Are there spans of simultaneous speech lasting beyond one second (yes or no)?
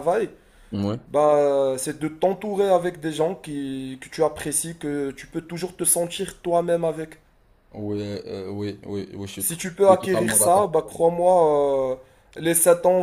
yes